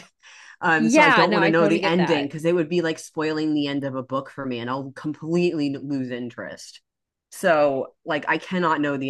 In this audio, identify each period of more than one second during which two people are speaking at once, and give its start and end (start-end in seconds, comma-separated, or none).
0.8-2.3